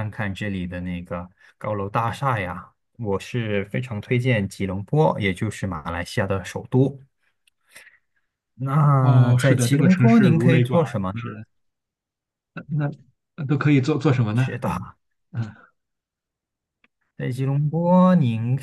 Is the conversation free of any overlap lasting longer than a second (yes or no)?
no